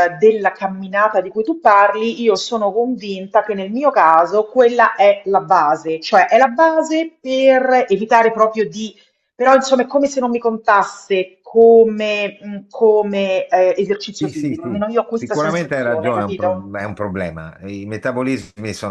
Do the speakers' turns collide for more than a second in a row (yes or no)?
yes